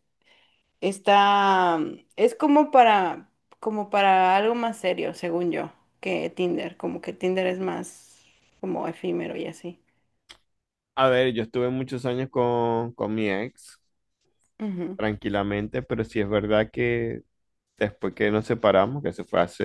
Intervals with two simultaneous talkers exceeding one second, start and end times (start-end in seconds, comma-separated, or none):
none